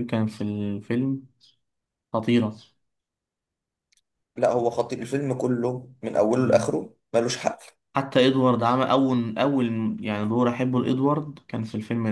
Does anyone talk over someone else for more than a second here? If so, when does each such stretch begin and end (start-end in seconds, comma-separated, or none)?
none